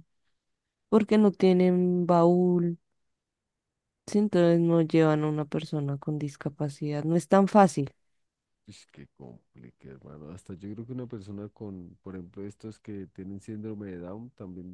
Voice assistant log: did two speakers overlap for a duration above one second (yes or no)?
no